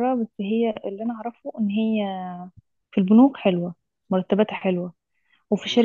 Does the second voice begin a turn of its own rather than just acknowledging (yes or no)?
no